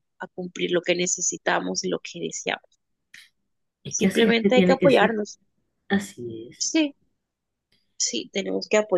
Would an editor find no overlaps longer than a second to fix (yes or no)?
no